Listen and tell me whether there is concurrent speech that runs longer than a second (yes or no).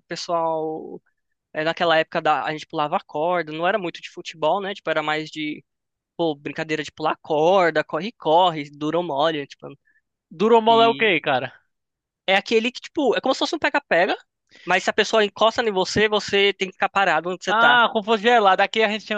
no